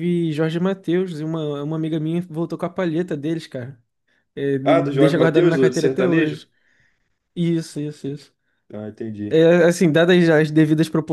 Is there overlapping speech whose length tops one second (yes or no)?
yes